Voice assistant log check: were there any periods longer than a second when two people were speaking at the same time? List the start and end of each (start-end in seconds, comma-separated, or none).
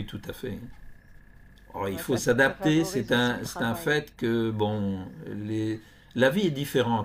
1.8-4.0